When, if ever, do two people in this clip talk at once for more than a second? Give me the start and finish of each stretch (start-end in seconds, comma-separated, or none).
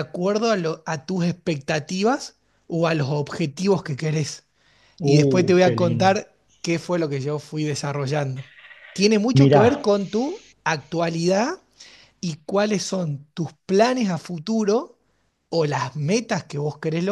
5.0-6.2